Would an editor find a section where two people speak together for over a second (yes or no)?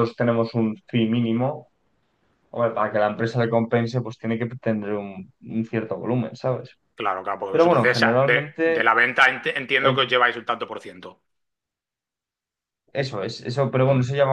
yes